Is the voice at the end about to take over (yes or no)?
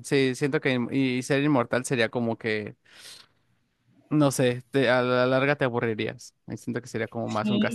yes